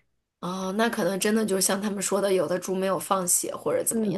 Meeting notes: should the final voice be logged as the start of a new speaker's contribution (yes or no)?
yes